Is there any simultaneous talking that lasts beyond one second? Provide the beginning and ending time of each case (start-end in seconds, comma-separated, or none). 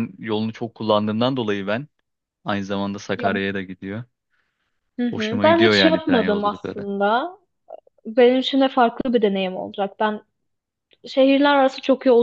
5.1-6.9